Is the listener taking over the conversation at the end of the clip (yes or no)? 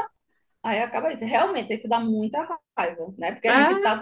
no